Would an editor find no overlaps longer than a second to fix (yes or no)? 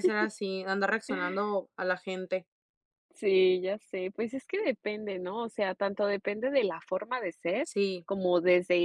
yes